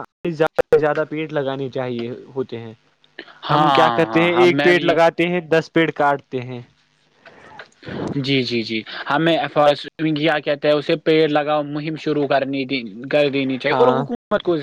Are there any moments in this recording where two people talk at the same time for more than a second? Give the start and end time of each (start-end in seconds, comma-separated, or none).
3.5-5.0